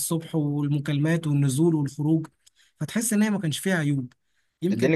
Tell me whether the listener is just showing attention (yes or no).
no